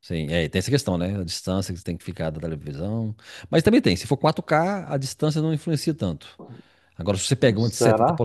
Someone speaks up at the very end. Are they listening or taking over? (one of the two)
listening